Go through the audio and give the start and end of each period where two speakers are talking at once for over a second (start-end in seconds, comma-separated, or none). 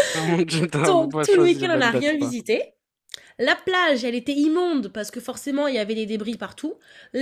0.9-2.4